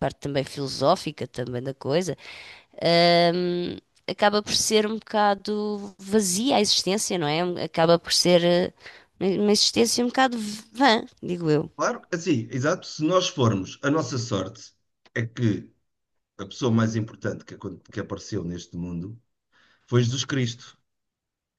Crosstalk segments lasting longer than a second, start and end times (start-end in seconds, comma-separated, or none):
none